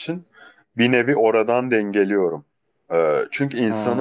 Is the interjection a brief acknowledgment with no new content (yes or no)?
yes